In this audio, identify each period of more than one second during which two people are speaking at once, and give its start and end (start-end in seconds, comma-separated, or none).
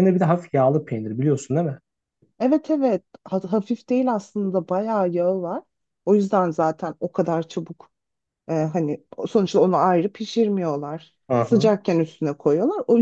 none